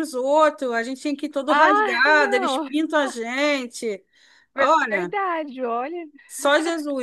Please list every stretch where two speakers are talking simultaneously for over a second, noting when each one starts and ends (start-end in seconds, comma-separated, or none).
1.5-2.7